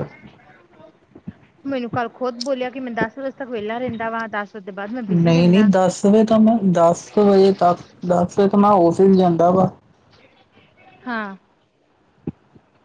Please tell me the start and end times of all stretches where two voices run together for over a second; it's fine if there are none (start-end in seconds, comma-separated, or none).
none